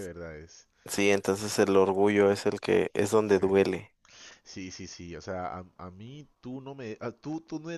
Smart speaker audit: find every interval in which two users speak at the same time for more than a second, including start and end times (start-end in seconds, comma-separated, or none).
none